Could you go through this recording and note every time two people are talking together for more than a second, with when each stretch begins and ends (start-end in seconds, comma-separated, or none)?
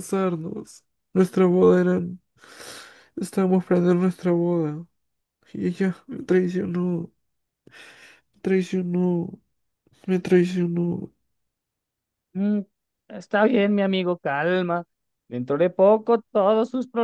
none